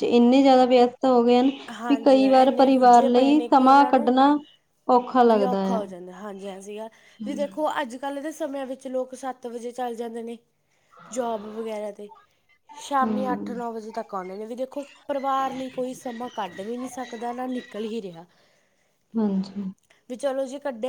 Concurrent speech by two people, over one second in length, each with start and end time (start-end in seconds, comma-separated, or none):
1.9-4.1